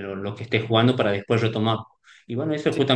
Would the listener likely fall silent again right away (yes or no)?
yes